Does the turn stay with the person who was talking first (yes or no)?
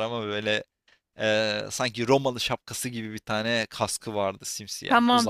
no